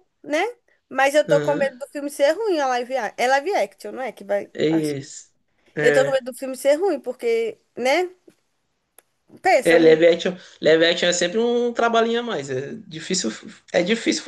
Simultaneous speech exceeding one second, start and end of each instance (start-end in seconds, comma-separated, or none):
none